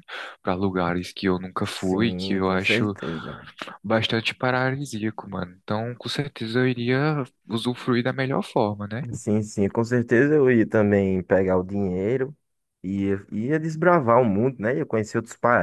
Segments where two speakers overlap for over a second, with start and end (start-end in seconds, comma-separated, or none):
1.6-2.9